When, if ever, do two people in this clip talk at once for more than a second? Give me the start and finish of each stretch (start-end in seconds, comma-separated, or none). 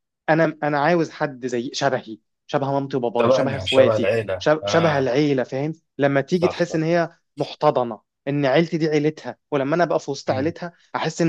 3.2-5.1